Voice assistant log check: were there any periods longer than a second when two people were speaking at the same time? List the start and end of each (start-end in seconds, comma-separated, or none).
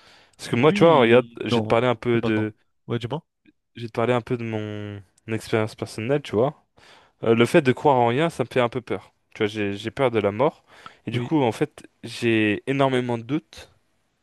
0.5-2.5